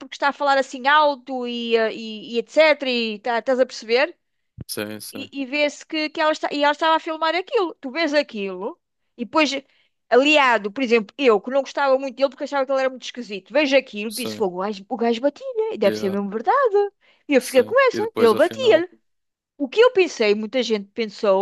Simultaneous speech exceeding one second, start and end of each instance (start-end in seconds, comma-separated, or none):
17.4-18.9